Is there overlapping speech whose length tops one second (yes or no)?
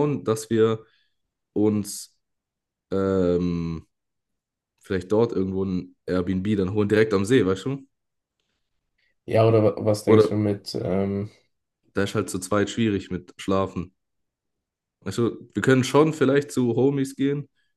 no